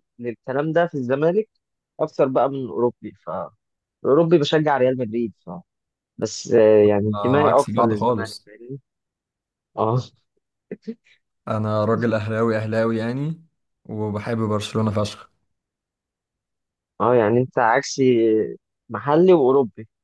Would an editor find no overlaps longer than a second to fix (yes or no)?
no